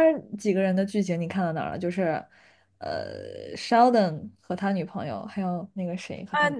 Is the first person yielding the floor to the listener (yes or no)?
yes